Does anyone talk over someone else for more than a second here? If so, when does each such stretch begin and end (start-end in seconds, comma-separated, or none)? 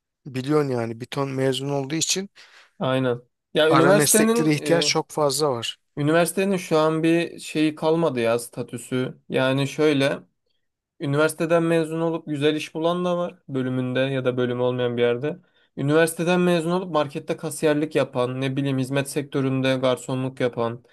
3.7-4.9